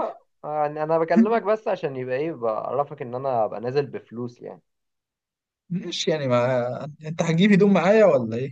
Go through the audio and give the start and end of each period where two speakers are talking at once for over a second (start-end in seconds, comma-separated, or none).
none